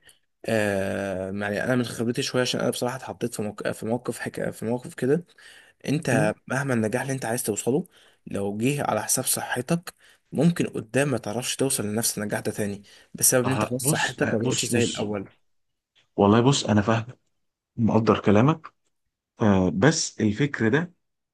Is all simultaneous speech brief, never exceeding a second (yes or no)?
no